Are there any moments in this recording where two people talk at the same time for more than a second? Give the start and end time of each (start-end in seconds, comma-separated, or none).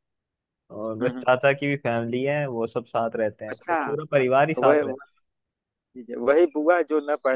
3.5-5.0